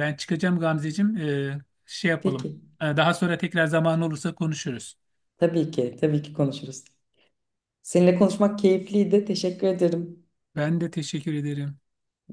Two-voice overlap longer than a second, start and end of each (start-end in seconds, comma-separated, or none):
none